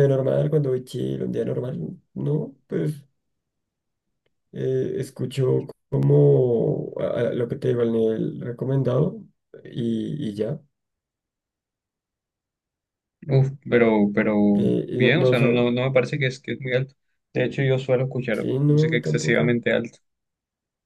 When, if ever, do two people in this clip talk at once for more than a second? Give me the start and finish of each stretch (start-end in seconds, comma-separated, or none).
18.3-19.6